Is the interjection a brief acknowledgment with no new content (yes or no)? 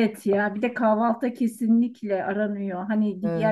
yes